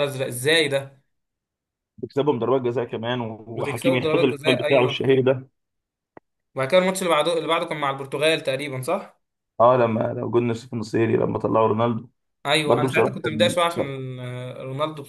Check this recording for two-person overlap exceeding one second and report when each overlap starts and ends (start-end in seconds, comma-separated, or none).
3.5-5.1, 12.7-13.9